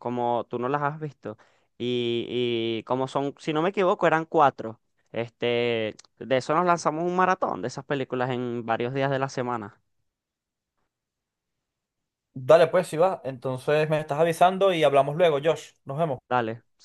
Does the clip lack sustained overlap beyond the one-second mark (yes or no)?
yes